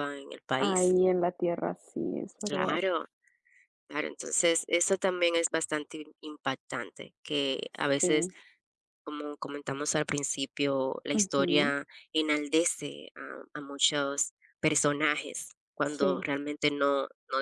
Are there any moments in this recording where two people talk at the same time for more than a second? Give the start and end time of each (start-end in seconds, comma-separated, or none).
none